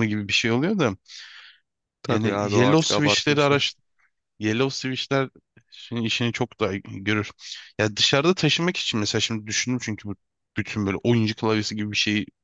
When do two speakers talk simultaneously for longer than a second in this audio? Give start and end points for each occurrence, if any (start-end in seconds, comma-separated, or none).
2.1-3.6